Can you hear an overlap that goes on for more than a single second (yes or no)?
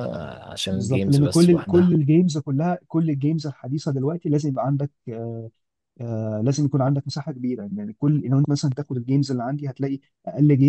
yes